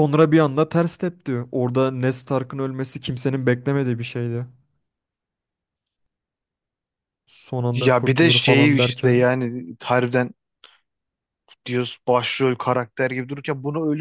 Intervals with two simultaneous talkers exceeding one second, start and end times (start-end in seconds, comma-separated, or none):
7.7-9.3